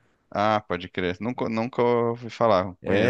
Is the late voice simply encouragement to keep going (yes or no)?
no